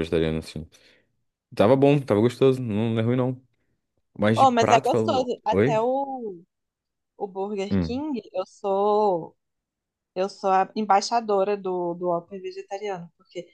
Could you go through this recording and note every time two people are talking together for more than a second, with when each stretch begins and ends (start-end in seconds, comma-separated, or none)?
4.3-5.8